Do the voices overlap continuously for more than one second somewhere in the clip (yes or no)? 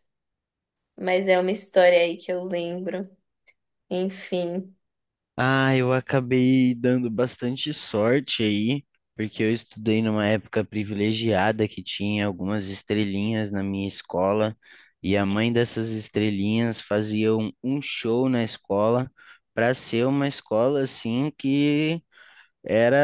no